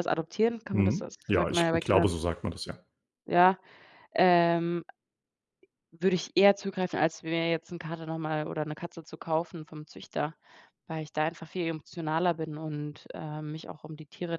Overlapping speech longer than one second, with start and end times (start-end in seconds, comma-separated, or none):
0.7-2.1